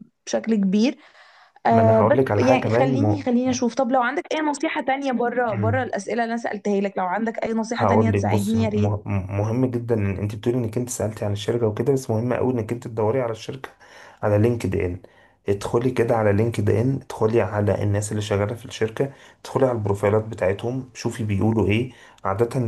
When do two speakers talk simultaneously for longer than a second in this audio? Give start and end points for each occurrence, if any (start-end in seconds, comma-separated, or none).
1.7-3.3, 7.7-9.0